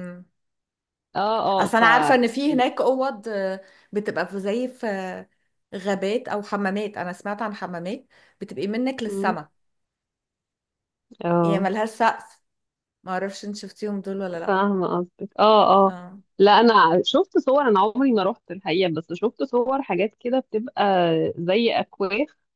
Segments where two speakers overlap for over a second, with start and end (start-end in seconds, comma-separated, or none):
none